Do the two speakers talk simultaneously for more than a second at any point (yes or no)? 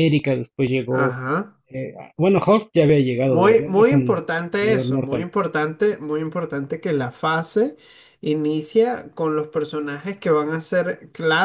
yes